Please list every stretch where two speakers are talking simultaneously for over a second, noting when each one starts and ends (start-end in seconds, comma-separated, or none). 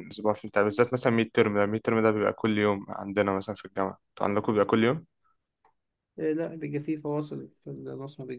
none